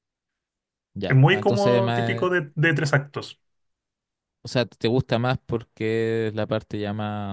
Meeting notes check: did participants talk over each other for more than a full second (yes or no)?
yes